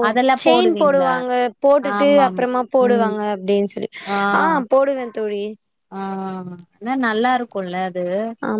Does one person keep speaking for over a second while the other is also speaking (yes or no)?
no